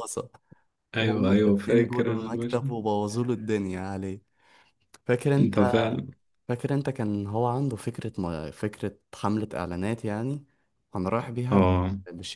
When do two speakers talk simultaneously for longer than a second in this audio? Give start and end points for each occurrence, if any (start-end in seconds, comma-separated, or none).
1.0-2.8